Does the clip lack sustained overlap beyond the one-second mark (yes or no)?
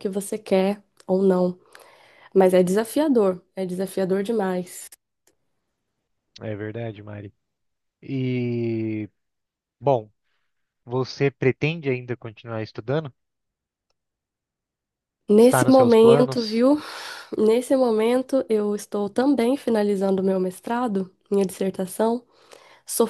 no